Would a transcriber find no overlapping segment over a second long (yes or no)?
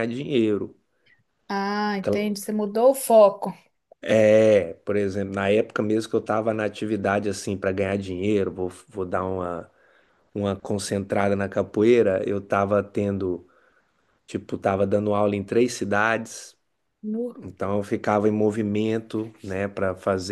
yes